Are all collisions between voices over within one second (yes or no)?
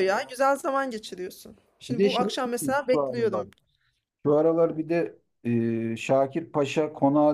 no